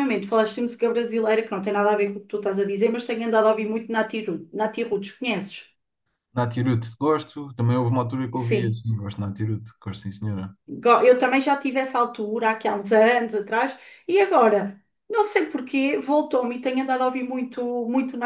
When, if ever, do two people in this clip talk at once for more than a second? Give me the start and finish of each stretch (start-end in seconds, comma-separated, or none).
none